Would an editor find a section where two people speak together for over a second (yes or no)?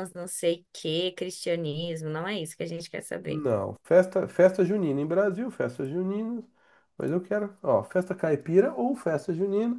no